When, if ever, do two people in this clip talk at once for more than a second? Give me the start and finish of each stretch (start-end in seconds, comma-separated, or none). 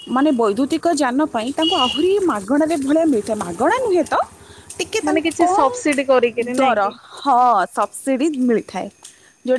5.1-6.9